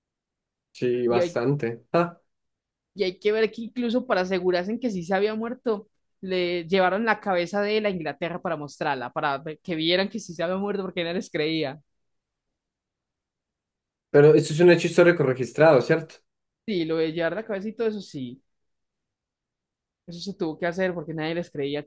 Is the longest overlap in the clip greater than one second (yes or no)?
no